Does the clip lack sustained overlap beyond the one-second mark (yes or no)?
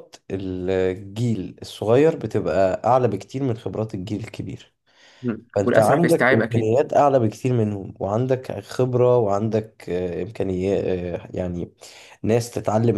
no